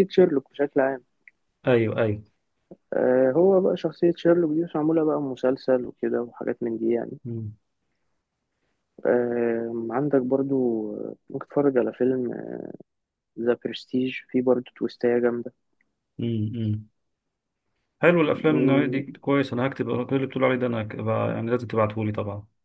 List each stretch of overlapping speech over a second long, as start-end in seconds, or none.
none